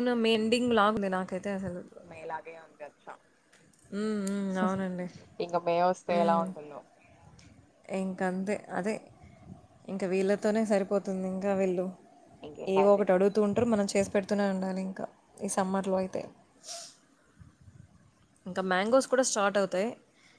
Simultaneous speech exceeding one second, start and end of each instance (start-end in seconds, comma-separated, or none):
none